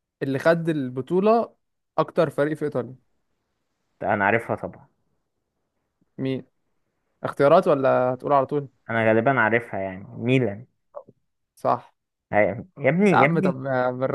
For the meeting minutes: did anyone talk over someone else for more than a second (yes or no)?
no